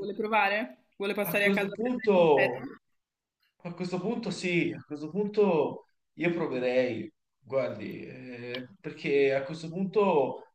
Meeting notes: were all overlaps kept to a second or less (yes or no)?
no